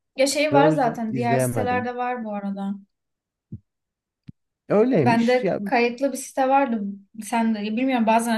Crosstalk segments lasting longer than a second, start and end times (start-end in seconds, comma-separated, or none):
0.5-1.9